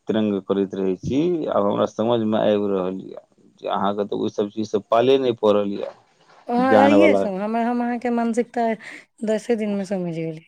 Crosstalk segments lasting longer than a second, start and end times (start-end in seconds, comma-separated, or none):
none